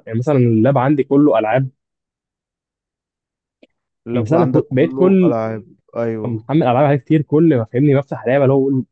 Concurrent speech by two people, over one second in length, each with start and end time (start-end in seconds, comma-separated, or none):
4.2-5.3